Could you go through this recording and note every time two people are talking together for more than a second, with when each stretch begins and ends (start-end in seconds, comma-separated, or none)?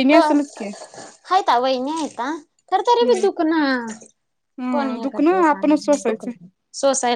4.8-6.3